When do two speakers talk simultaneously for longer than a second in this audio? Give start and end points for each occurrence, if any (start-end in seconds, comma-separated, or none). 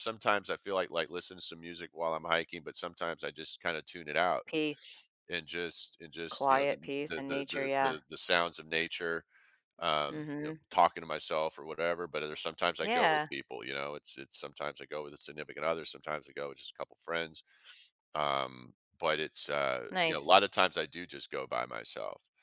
6.3-7.9